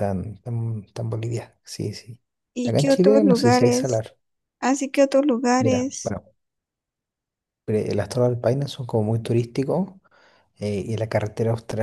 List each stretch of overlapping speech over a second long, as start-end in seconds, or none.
2.6-4.0